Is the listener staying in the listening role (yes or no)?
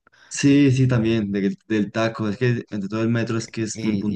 no